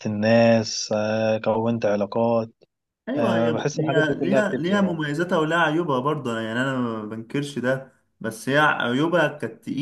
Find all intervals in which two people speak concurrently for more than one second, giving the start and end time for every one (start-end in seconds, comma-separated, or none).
3.1-5.0